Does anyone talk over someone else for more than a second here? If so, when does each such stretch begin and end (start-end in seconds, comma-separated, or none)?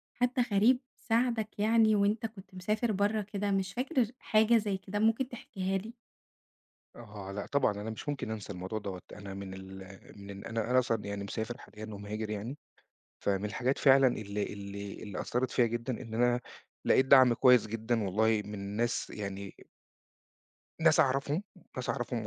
none